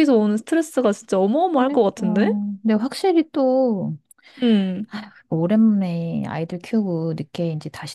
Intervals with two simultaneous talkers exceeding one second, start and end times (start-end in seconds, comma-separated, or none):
none